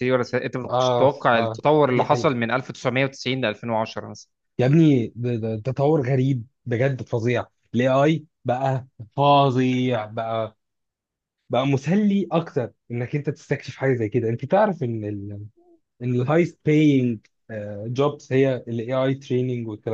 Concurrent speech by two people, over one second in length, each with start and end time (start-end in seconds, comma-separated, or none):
0.7-2.3